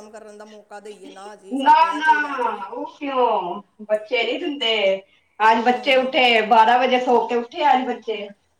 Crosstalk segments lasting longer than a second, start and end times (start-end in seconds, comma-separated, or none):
none